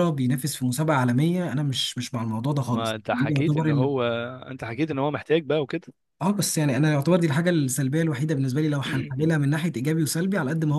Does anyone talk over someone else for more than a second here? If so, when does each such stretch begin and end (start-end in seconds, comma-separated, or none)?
2.7-3.9